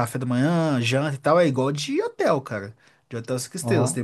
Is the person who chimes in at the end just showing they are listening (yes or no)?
yes